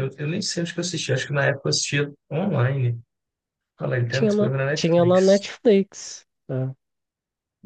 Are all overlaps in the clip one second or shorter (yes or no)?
no